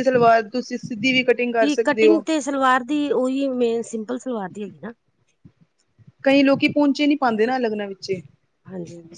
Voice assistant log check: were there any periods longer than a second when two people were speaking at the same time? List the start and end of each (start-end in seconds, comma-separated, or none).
none